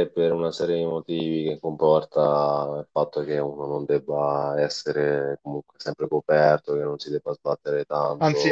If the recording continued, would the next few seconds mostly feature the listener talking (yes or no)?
yes